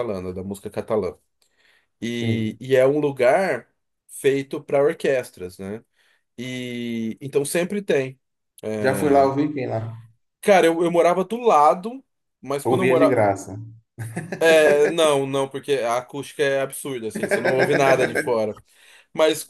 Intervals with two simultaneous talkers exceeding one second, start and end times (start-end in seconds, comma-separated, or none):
none